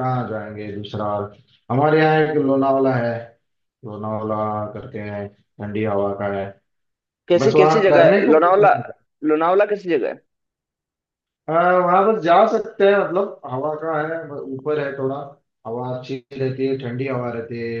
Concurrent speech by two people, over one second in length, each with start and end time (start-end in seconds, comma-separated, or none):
7.4-8.7